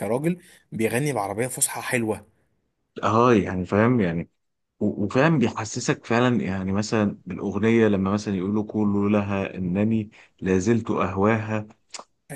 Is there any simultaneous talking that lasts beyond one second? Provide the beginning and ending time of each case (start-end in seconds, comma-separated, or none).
none